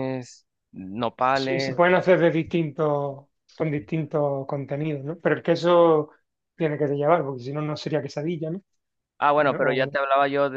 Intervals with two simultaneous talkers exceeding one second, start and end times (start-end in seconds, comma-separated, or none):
none